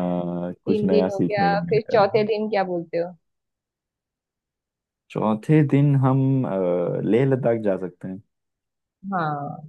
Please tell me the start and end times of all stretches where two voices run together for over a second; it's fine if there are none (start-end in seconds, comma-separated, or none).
0.6-2.0